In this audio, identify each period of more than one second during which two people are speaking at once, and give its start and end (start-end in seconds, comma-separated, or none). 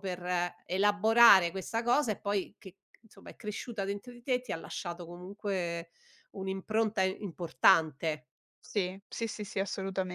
none